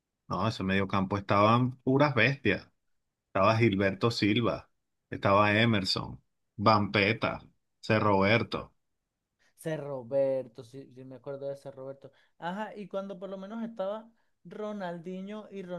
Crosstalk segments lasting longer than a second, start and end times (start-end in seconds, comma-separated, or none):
none